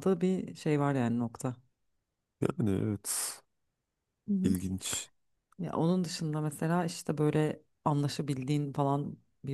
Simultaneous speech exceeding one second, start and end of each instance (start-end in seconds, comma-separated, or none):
none